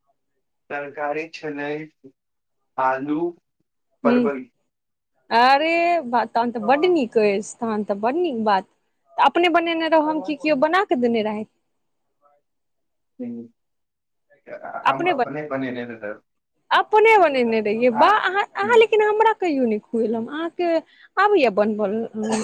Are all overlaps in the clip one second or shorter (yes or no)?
yes